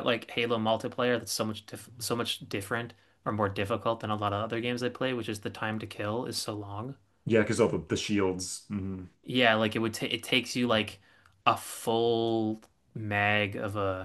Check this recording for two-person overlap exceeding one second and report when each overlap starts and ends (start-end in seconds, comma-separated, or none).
none